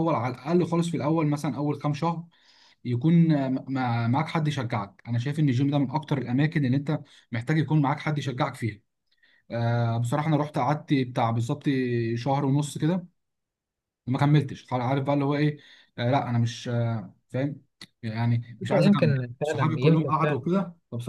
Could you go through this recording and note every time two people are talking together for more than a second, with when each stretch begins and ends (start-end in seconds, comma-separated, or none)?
18.6-20.4